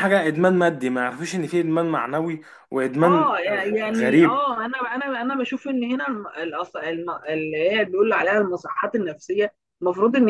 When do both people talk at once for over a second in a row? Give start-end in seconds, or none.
3.0-4.5